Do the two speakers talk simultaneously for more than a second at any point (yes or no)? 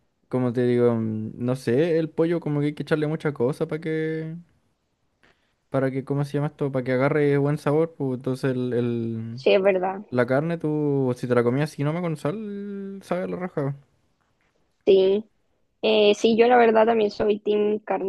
no